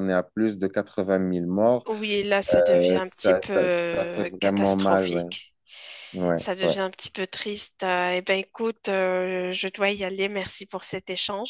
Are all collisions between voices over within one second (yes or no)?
no